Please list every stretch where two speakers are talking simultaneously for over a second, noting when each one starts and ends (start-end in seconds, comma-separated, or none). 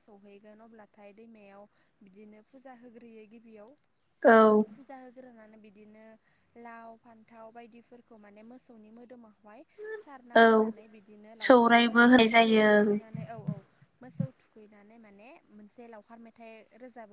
11.4-13.0